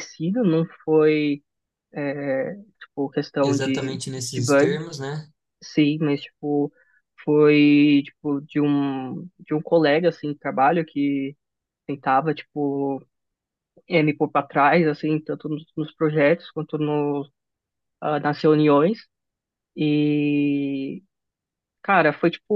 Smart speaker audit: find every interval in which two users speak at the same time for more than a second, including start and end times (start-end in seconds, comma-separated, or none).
3.4-4.8